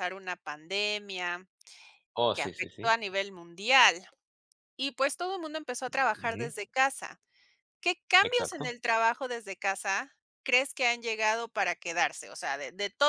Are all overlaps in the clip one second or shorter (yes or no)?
yes